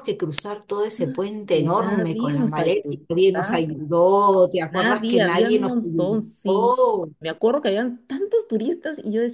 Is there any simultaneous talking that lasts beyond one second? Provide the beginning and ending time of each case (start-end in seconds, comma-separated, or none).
1.5-3.6, 4.7-6.8